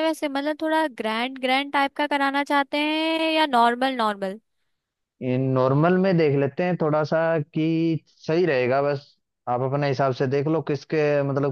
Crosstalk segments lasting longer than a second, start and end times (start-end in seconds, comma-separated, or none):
none